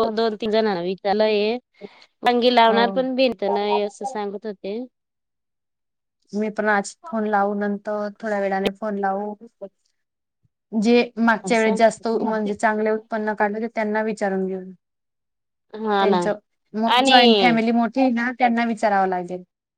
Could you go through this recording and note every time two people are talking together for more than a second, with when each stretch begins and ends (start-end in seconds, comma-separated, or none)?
2.7-4.0